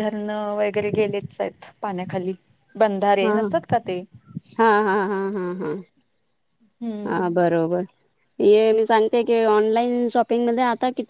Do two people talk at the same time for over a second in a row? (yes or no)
no